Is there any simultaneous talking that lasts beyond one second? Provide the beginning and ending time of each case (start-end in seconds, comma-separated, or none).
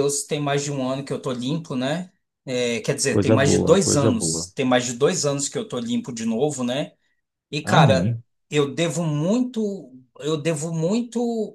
3.1-4.5